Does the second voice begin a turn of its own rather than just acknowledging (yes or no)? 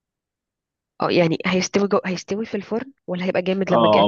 yes